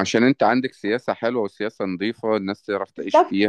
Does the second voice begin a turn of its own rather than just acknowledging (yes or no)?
yes